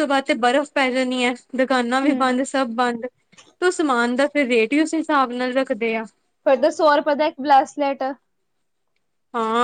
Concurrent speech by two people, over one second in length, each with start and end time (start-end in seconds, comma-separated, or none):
none